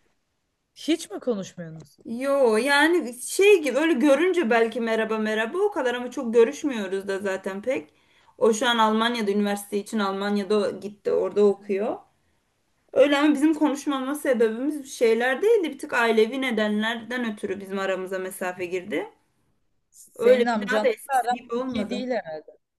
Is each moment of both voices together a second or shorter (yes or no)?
no